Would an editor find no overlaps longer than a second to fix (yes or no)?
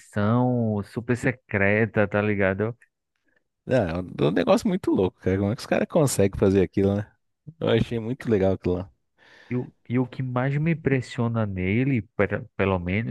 yes